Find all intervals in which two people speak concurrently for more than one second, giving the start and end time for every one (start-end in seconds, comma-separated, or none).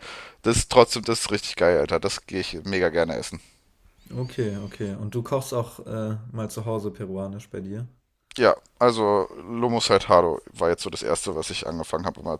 none